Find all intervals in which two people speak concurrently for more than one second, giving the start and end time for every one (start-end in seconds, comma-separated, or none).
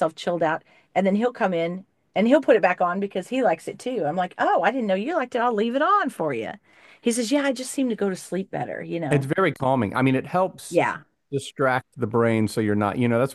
none